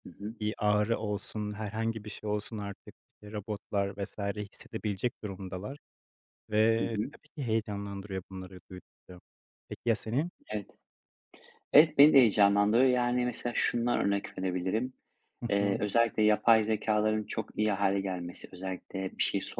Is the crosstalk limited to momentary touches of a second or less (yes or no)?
yes